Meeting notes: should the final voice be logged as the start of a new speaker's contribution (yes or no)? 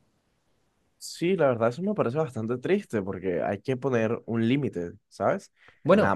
no